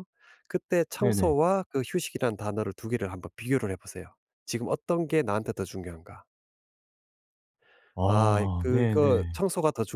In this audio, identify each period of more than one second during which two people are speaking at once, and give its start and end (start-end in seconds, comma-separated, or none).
8.1-9.4